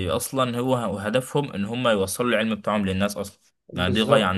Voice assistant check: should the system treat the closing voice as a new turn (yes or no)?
yes